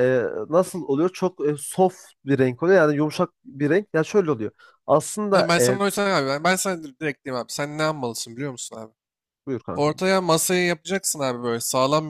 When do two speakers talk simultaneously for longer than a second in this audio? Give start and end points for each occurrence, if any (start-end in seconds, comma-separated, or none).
none